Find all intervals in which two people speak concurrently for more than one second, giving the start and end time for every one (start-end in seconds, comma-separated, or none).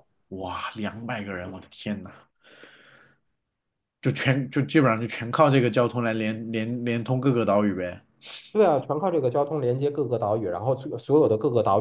none